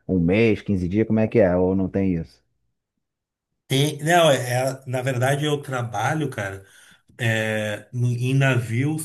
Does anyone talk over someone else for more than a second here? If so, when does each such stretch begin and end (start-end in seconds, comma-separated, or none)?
none